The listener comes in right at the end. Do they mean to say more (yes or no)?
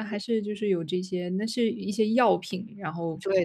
yes